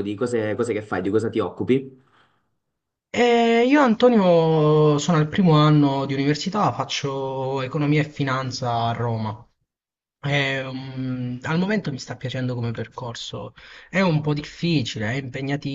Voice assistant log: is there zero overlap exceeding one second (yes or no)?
yes